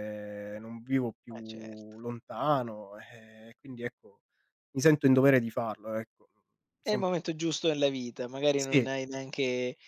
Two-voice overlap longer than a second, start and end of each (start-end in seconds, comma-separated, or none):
none